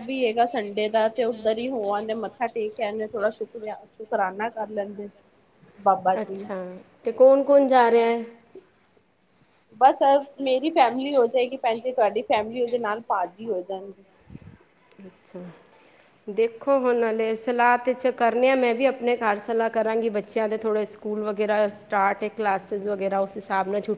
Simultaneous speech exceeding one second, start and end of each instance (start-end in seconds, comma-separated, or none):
none